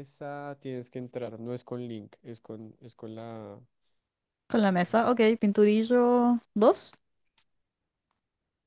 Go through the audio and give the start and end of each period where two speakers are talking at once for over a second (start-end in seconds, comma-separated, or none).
none